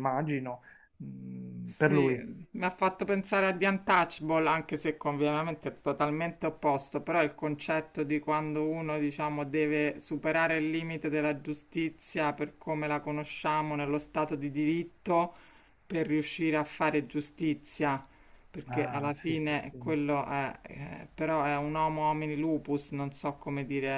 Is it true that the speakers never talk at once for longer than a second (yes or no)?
no